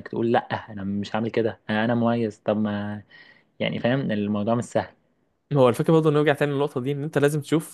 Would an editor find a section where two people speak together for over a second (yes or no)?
no